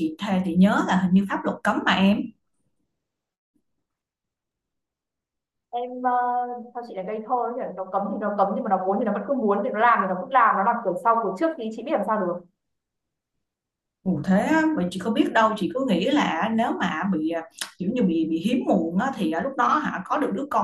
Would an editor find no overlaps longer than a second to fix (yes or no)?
yes